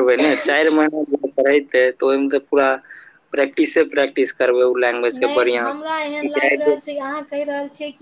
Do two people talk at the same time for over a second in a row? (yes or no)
yes